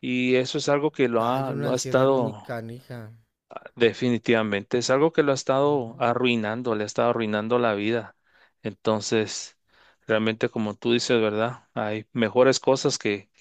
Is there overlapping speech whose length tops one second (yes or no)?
yes